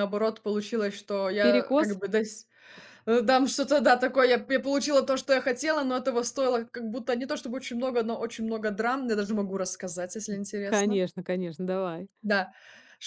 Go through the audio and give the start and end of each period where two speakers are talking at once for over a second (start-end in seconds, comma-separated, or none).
none